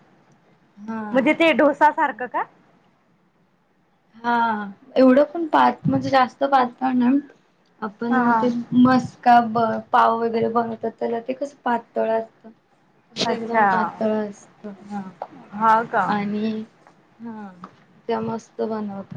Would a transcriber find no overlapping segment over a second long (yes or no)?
yes